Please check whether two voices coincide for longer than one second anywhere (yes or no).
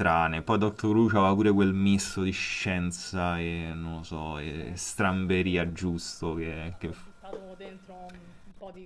yes